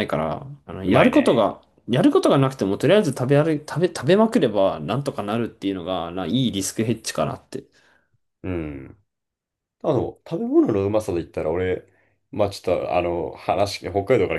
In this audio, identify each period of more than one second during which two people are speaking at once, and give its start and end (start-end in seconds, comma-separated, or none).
none